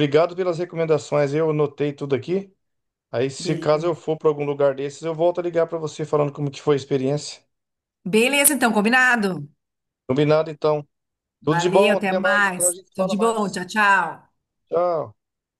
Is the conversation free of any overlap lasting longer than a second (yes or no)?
no